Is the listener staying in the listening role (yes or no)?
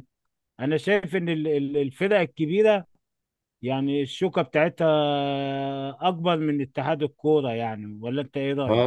no